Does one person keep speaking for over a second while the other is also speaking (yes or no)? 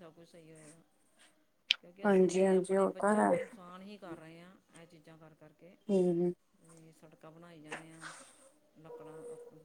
yes